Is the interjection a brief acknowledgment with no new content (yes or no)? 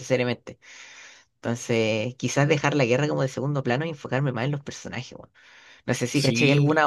yes